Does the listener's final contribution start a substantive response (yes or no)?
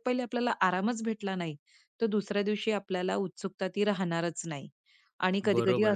yes